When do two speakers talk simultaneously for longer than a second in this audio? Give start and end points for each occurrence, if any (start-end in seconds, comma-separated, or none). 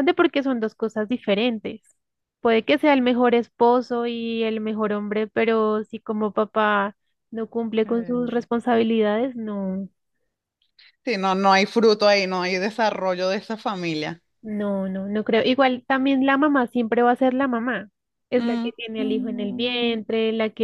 18.4-20.0